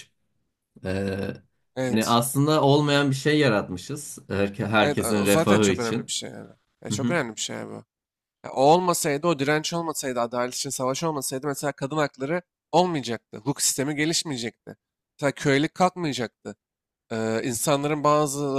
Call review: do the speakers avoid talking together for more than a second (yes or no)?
no